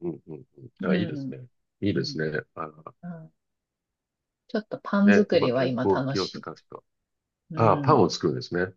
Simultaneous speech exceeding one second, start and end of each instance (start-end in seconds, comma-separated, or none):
5.0-6.7